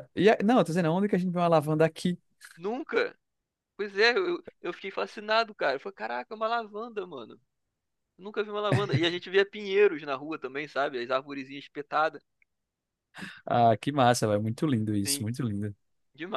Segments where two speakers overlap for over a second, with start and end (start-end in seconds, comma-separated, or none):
none